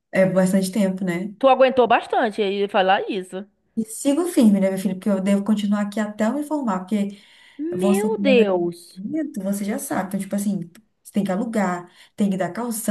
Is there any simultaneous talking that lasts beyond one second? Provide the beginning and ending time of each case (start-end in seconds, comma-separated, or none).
7.7-9.0